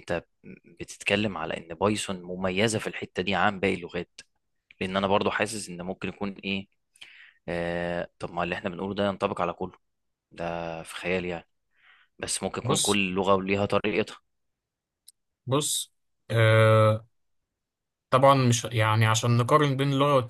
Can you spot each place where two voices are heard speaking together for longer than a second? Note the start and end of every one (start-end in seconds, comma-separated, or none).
none